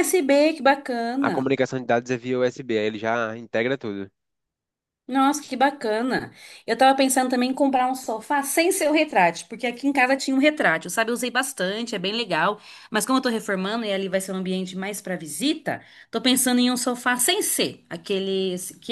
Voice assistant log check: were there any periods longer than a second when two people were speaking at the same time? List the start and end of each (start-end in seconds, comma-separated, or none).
none